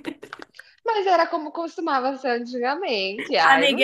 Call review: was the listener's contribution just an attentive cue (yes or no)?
no